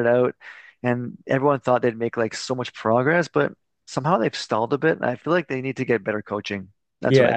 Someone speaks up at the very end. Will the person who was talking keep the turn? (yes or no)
no